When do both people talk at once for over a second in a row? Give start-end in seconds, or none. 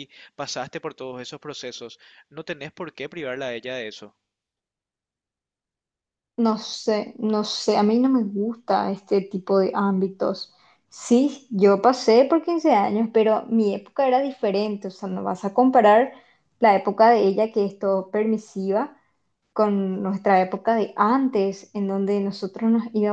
none